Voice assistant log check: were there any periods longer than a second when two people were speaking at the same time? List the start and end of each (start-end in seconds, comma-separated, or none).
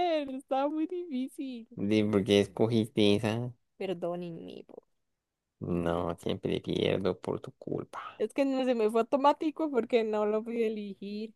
none